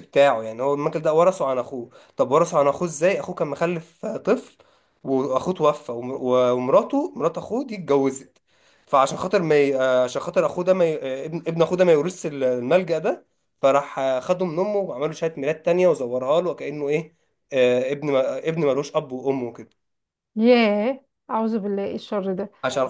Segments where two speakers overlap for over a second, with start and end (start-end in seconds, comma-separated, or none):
none